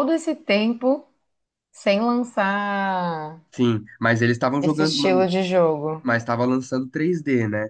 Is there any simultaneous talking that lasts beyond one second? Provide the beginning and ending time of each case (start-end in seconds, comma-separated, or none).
none